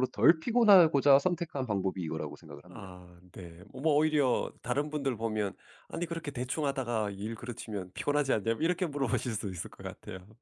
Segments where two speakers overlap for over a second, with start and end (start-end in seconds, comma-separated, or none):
none